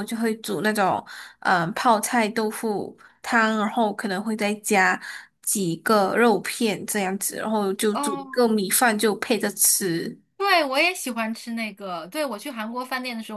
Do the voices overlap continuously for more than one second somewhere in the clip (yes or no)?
no